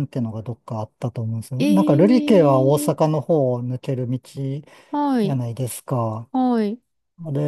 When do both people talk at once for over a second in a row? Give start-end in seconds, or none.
1.6-2.9